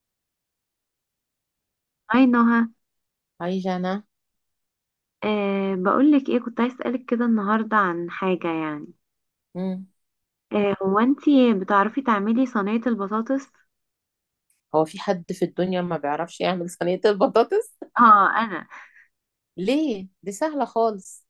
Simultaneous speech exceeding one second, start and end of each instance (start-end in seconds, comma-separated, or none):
none